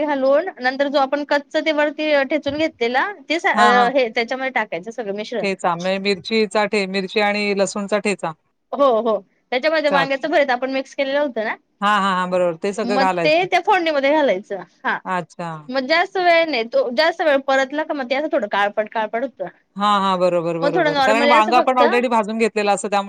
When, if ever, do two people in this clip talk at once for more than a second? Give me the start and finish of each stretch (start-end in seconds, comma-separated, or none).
20.6-21.8